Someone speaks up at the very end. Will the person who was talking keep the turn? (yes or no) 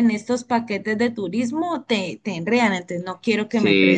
no